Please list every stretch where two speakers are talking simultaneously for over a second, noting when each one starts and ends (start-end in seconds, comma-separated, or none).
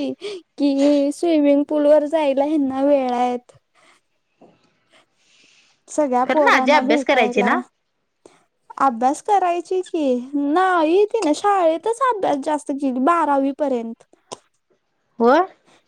6.3-7.5